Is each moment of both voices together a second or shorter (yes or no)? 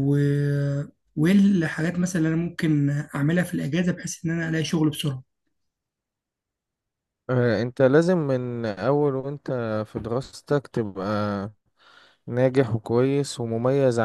yes